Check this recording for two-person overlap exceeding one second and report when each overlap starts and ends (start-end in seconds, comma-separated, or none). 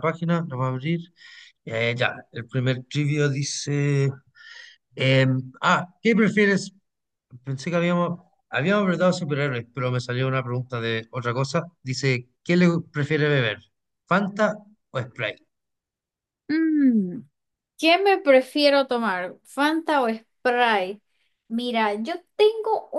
none